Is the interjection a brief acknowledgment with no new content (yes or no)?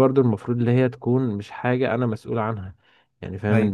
yes